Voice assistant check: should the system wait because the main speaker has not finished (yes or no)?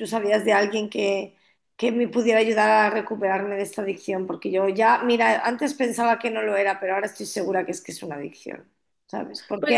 yes